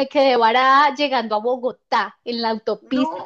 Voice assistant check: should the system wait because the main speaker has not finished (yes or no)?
yes